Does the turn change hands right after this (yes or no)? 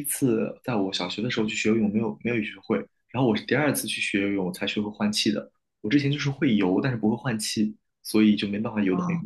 yes